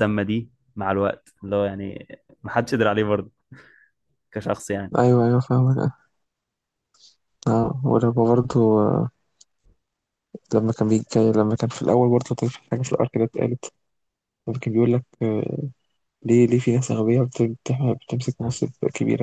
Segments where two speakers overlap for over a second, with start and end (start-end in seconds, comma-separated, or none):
none